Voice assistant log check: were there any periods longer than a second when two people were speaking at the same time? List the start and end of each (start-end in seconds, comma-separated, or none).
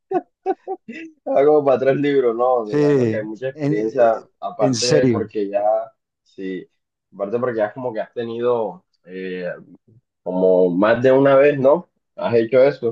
3.5-5.3